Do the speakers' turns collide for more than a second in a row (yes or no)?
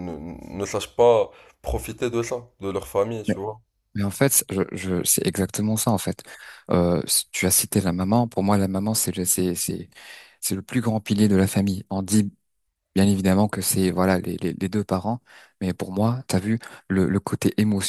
no